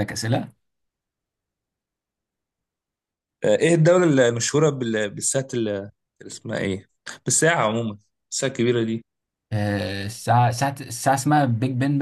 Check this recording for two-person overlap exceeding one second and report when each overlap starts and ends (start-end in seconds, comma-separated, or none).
none